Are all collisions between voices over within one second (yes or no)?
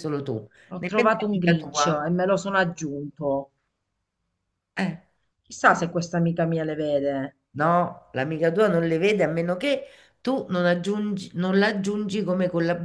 no